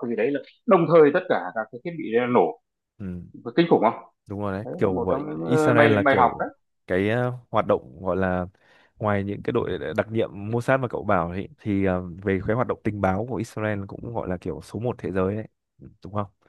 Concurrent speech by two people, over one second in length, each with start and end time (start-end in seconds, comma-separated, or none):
4.6-6.3